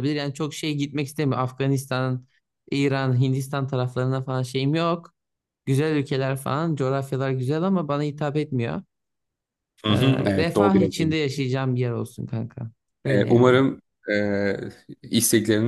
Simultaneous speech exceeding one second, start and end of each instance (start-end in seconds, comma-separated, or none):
9.9-11.1